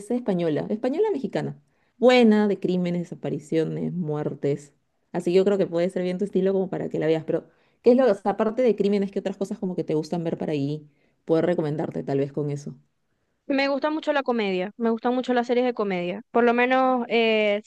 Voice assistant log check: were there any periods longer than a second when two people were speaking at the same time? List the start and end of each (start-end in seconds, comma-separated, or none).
none